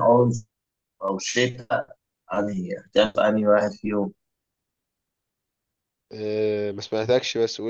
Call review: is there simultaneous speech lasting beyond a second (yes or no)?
no